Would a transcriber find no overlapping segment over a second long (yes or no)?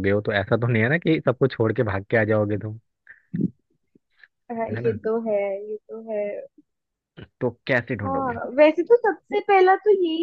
yes